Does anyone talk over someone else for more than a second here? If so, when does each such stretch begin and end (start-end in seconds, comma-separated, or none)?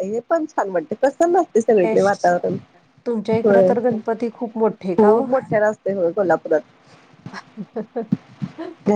none